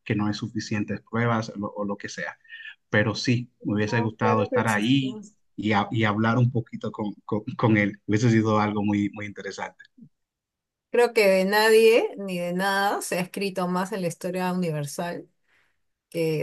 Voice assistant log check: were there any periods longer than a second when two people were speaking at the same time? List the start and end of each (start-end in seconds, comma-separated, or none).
3.9-5.2